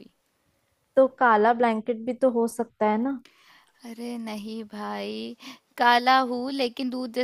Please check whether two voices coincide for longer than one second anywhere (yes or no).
no